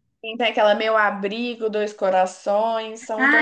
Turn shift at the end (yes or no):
yes